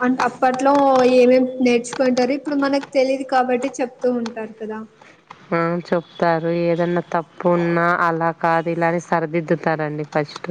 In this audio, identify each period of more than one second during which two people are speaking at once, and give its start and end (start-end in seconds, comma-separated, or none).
none